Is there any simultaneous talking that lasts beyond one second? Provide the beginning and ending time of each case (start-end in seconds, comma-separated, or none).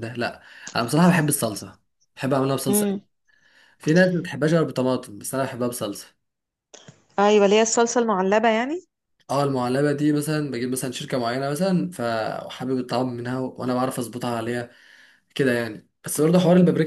none